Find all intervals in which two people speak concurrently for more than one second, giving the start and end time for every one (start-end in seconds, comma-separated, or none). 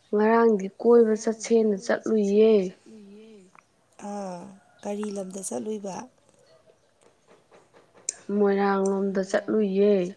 1.0-2.5